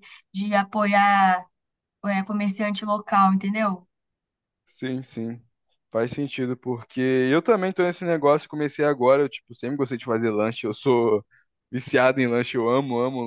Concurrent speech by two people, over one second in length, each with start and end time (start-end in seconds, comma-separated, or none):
none